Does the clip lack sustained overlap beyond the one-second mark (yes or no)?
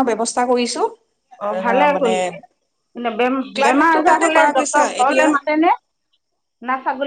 no